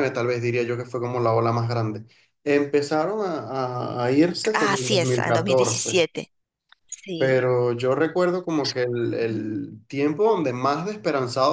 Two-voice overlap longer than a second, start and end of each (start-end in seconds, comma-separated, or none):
4.5-6.0